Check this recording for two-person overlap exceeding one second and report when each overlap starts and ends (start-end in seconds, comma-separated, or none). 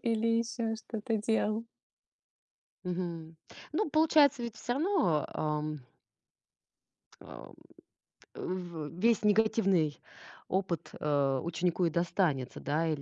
none